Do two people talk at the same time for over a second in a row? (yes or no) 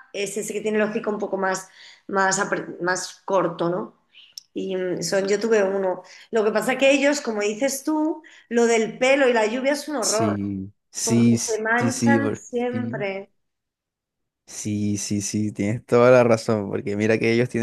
yes